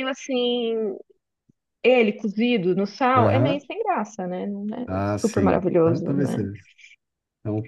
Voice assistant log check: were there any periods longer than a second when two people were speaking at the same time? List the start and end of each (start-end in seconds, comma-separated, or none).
4.9-6.5